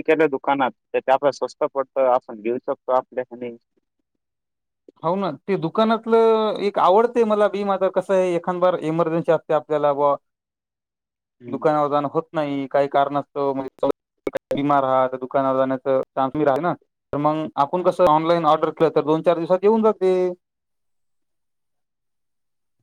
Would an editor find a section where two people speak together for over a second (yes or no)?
no